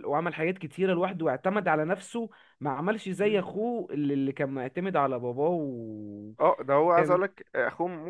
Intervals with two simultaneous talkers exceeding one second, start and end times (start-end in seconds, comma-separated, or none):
none